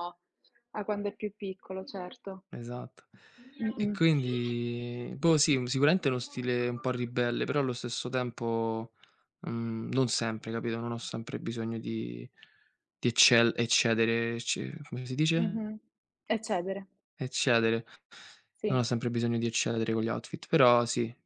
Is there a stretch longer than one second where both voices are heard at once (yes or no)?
no